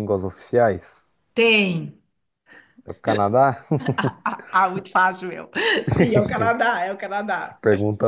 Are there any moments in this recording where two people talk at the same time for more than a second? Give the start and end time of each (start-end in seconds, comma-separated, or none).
none